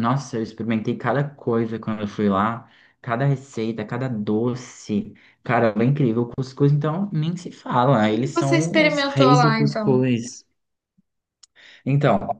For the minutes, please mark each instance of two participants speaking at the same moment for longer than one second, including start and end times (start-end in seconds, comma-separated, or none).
8.1-10.0